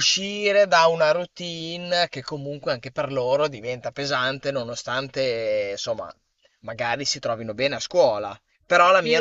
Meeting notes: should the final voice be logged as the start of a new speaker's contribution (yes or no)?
yes